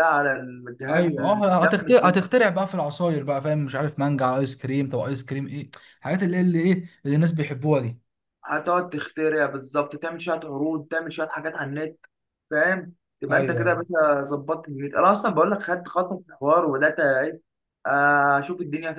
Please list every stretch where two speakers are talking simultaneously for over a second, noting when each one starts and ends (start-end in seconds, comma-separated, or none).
0.9-2.2